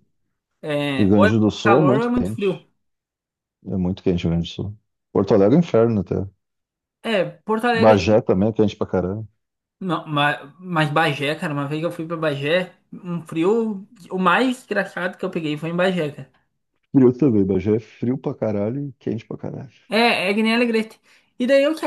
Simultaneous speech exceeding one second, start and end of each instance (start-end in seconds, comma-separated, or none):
0.9-2.7